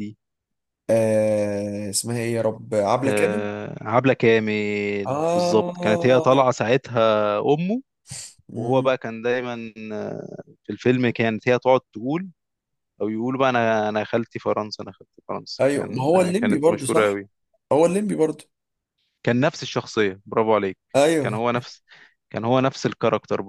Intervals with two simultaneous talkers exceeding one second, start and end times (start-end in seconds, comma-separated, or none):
5.0-6.5, 15.6-17.2